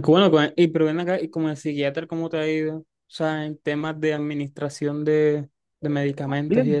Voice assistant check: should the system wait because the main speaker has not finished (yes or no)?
no